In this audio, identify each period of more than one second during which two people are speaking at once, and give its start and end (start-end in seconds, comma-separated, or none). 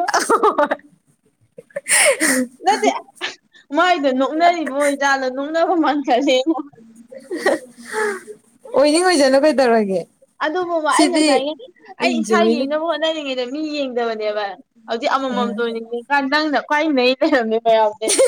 none